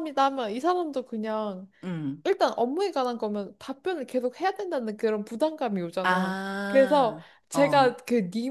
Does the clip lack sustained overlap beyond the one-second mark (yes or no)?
no